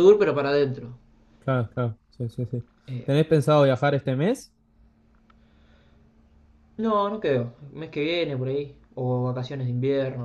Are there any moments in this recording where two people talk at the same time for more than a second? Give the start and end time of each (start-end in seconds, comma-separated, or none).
none